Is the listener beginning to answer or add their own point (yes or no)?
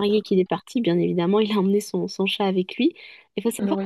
no